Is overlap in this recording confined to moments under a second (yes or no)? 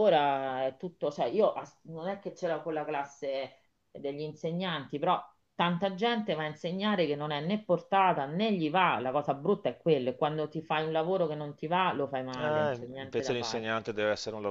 no